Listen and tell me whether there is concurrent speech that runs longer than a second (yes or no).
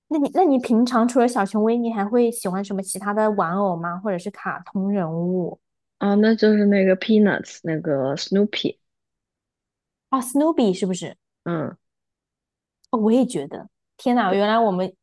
no